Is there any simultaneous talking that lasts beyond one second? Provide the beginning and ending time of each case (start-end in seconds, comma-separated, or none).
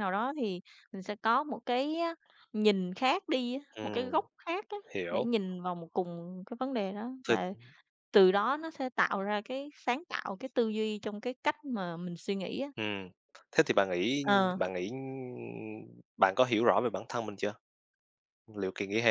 none